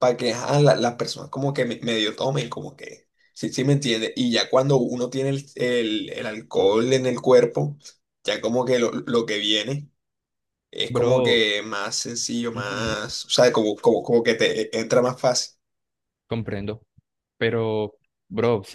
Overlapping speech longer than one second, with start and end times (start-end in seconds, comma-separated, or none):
none